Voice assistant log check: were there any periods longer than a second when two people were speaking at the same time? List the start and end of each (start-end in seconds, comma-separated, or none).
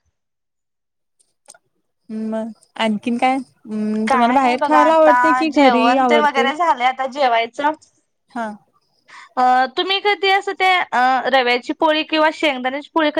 4.1-6.5